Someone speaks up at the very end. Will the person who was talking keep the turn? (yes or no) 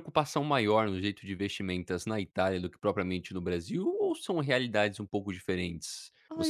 no